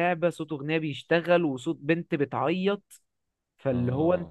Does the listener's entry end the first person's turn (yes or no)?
no